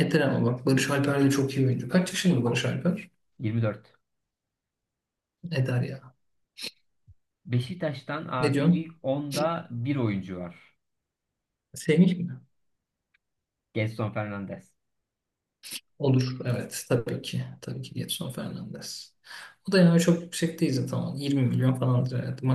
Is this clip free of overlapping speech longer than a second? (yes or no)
yes